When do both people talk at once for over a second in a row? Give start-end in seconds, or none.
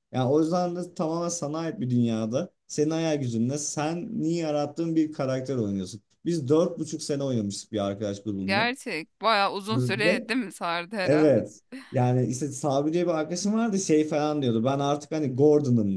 none